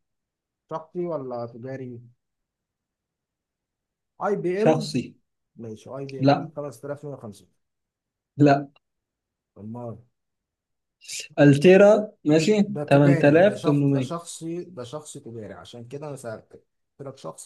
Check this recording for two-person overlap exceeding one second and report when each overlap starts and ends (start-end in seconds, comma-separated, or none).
12.7-14.2